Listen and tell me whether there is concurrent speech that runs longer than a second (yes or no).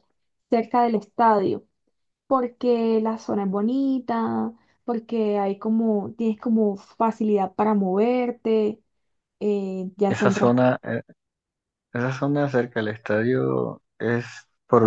no